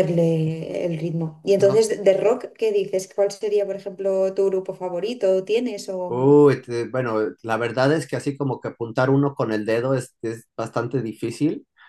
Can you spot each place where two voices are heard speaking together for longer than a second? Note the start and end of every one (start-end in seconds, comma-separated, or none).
none